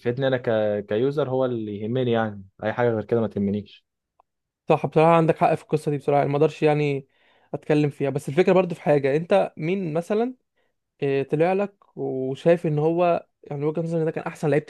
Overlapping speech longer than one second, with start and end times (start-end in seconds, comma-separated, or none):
none